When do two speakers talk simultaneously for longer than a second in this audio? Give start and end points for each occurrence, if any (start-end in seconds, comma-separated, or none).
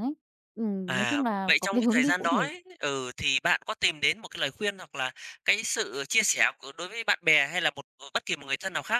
0.8-2.5